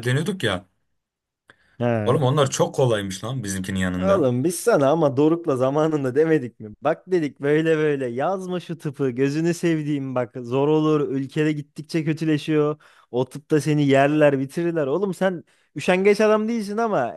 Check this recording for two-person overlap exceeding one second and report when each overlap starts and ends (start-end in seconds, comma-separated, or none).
none